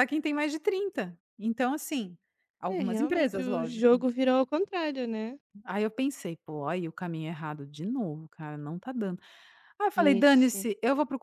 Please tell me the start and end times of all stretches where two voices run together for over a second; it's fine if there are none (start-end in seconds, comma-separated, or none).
2.7-3.9